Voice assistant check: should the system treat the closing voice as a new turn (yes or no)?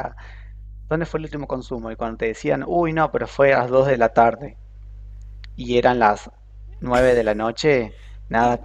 no